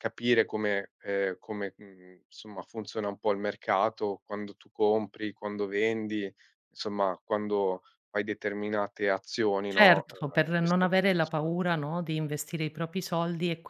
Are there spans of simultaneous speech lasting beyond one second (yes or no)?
yes